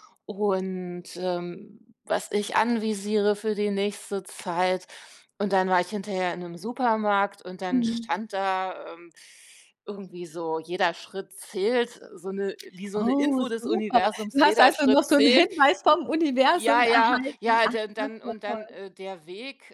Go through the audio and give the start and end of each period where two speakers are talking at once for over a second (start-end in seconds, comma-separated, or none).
13.0-15.5, 16.5-18.8